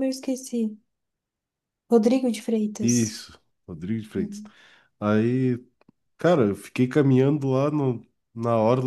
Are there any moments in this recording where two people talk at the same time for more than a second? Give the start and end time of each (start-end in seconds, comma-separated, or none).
none